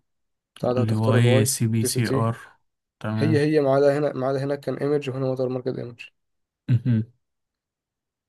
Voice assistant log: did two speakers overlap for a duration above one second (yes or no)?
yes